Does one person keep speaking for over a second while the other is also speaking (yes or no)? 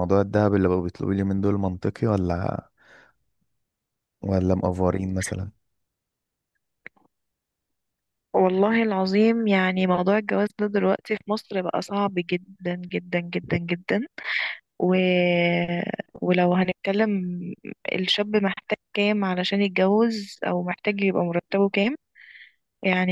no